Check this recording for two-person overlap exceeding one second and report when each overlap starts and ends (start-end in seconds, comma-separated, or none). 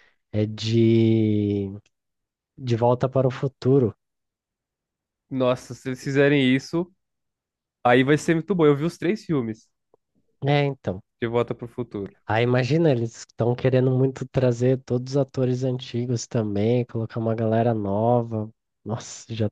none